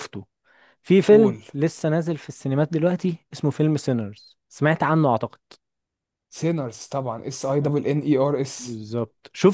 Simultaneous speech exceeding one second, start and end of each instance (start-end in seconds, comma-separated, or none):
none